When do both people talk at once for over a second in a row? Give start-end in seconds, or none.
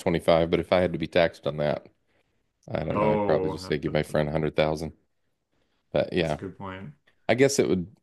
3.0-4.2